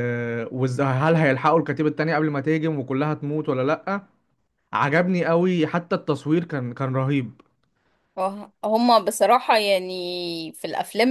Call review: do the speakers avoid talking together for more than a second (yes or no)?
yes